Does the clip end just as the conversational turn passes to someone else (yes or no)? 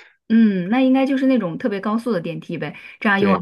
no